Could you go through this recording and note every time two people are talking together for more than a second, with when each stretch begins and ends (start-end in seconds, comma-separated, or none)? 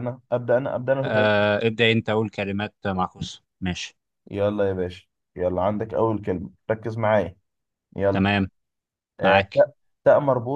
none